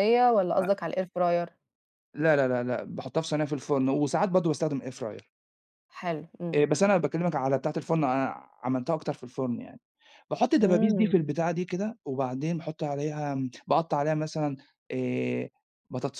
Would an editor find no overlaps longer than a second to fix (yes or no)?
yes